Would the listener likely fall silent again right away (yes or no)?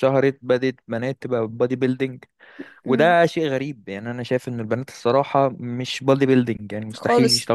no